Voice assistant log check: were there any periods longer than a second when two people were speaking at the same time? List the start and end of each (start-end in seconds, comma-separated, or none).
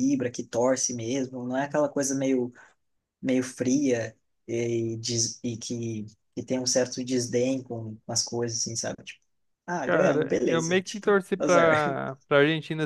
9.8-11.7